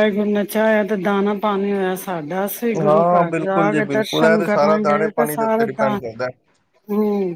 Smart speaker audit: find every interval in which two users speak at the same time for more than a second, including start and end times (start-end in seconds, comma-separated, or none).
2.9-6.0